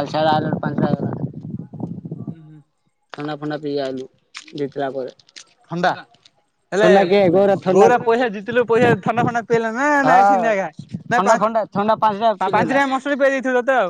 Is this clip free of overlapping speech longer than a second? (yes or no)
no